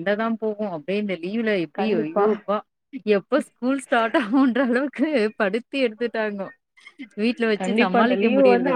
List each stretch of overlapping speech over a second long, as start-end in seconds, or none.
none